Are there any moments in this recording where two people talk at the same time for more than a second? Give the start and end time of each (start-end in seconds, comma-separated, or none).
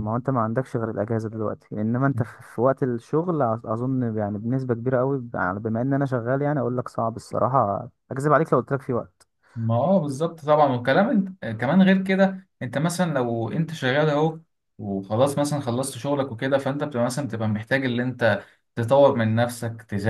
none